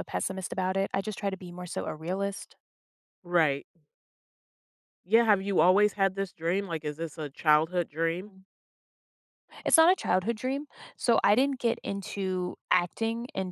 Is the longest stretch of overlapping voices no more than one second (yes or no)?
yes